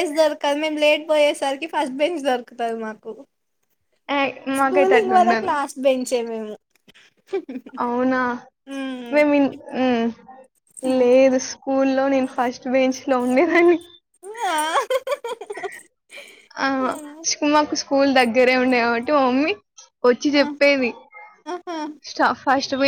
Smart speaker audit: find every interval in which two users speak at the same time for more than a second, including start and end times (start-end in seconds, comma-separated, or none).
none